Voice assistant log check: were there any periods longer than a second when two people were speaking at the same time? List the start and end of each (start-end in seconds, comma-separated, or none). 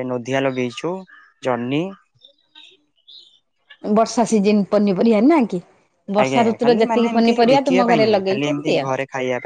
6.2-8.8